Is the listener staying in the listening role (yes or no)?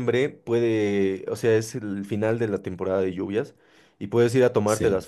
yes